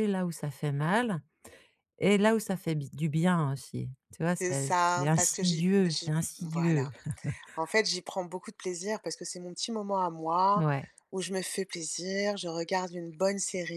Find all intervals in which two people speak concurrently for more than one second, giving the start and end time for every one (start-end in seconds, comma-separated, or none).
4.4-6.9